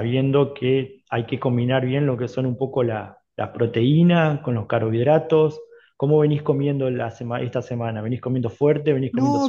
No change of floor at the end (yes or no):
no